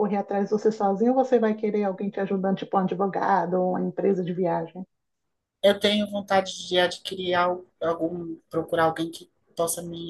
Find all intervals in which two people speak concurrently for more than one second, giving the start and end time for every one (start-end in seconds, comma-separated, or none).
none